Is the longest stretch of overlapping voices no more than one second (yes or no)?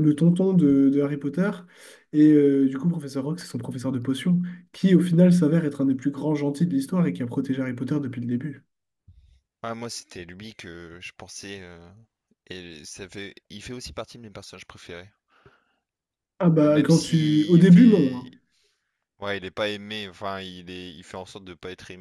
no